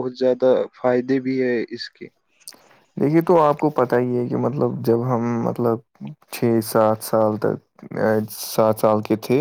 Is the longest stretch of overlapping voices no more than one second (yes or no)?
yes